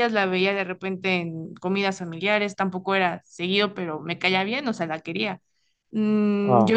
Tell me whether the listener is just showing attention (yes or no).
no